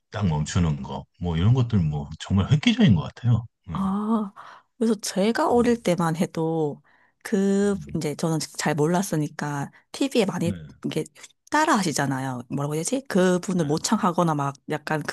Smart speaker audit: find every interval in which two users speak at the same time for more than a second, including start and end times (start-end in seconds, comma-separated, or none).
none